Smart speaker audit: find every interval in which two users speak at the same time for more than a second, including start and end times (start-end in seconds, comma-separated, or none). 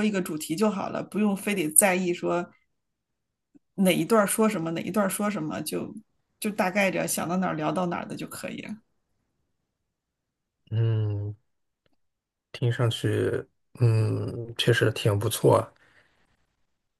none